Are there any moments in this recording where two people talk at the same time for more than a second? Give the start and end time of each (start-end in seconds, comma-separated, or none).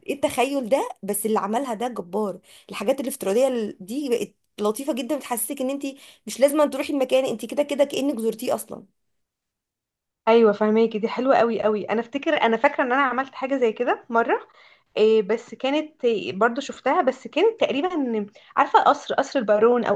none